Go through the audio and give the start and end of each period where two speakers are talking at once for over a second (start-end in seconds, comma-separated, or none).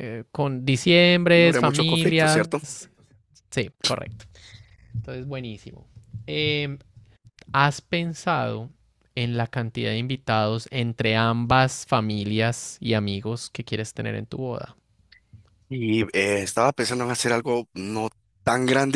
1.3-2.6